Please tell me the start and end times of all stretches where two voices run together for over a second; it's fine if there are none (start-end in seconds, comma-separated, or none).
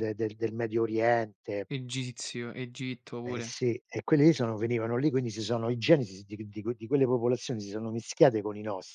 none